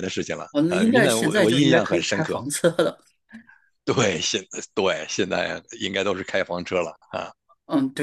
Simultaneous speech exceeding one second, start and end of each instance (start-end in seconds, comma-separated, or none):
0.5-2.4